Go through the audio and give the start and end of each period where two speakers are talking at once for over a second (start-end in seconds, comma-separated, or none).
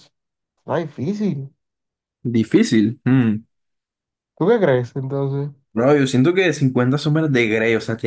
none